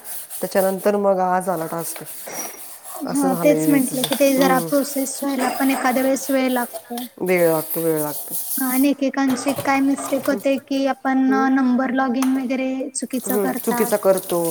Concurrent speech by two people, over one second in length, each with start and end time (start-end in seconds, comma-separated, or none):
3.1-4.7